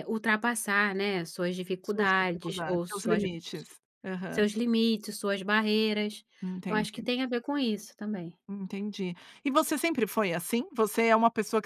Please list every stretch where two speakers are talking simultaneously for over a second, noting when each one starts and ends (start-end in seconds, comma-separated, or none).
1.8-3.2